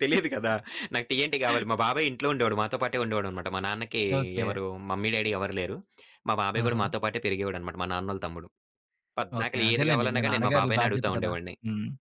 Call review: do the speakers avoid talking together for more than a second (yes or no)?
no